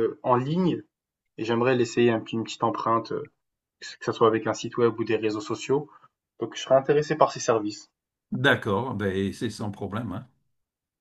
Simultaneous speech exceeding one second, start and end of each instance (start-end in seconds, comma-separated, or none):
none